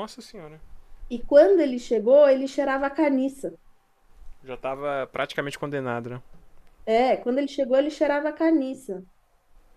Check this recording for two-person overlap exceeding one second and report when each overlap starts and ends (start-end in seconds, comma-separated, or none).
none